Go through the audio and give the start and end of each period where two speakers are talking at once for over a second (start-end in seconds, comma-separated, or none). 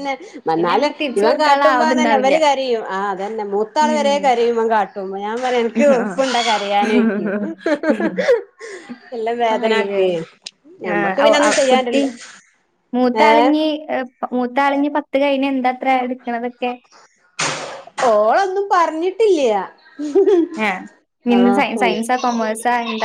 0.6-2.4